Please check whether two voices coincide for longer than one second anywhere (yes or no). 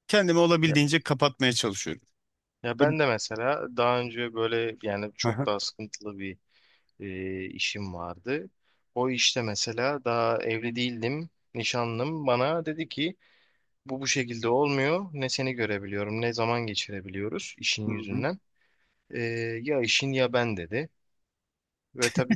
no